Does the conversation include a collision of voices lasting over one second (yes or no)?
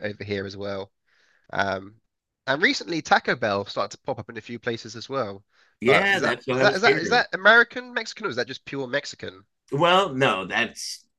yes